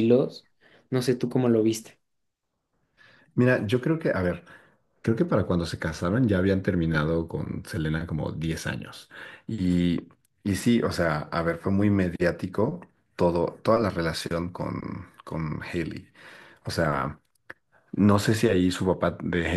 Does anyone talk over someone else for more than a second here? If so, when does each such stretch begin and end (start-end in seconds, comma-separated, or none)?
none